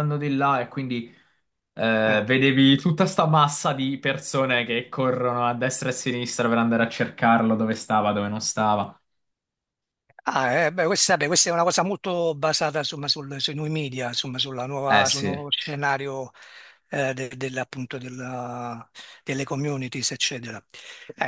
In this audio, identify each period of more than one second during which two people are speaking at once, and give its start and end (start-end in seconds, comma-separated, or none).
none